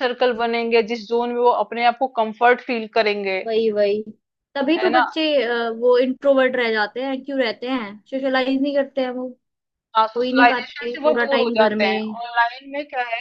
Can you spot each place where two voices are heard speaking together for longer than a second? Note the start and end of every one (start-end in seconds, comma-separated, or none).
10.2-12.1